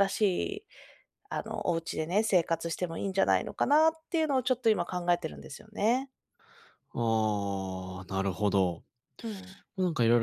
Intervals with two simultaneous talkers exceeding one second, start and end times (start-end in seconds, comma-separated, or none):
none